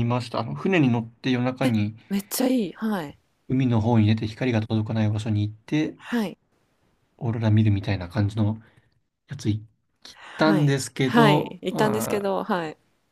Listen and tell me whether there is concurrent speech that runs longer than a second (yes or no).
yes